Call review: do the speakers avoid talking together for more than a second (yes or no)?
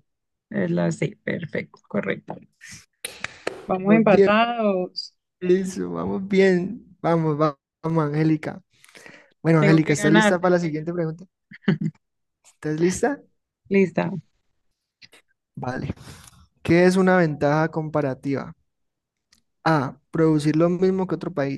no